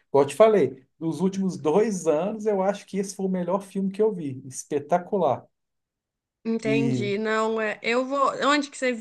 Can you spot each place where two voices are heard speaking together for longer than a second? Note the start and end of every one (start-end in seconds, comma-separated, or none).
none